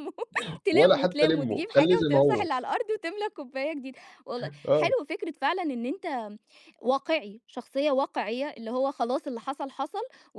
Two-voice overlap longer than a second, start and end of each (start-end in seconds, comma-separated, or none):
0.7-2.5